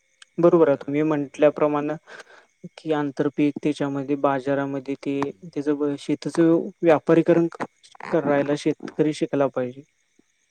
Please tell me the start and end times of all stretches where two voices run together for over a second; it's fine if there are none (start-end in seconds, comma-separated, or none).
0.5-1.7